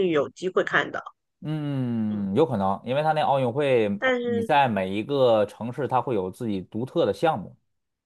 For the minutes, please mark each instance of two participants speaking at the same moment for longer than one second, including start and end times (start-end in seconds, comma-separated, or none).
none